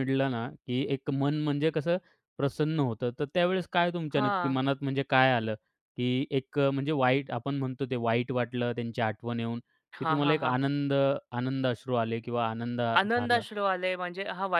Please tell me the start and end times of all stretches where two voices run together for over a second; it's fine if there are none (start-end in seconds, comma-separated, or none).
none